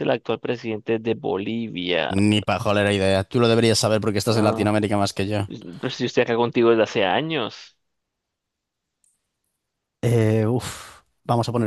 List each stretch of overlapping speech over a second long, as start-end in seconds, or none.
none